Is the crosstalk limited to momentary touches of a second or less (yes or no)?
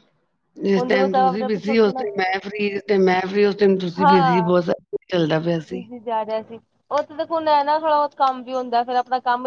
no